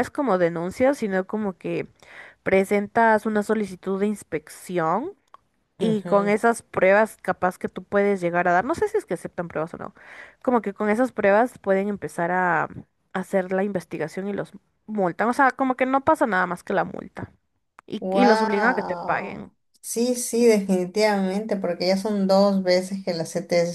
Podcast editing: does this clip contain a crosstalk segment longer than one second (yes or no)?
yes